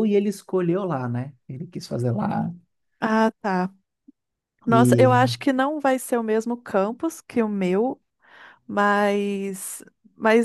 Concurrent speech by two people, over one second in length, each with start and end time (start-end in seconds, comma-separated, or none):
none